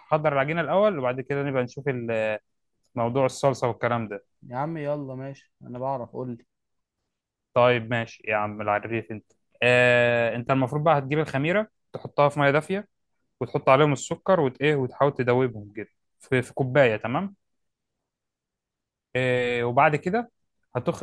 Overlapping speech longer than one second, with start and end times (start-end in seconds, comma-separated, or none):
none